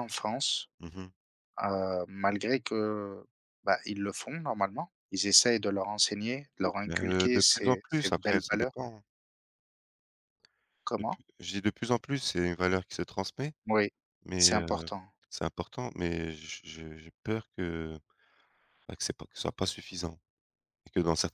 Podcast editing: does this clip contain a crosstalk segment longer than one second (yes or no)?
yes